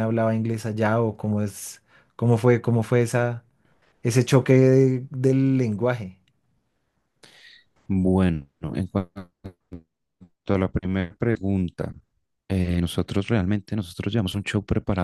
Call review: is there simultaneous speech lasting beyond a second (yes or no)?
no